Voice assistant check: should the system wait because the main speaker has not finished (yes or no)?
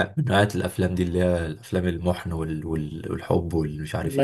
no